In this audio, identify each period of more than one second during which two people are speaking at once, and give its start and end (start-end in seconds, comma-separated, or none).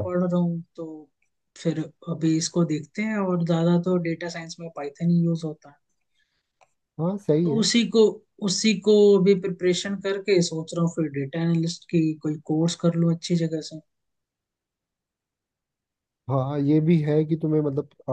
none